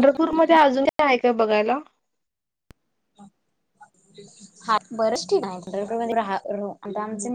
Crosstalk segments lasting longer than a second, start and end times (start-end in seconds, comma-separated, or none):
none